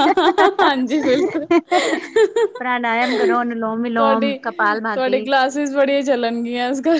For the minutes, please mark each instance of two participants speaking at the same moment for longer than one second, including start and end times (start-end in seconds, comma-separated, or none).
4.0-5.2